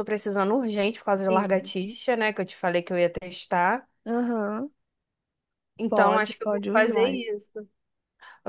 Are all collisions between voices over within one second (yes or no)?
no